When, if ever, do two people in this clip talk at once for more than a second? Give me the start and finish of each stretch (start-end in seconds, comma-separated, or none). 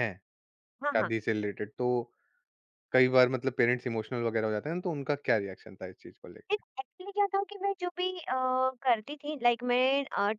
none